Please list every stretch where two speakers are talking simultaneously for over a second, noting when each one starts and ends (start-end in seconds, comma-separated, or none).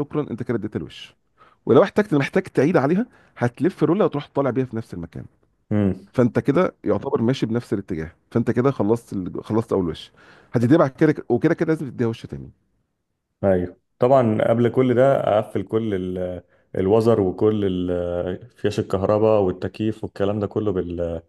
none